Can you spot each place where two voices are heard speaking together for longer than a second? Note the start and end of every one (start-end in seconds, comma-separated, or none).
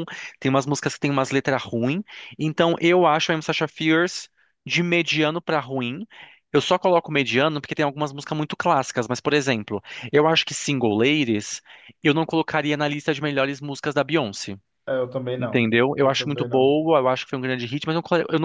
15.4-16.7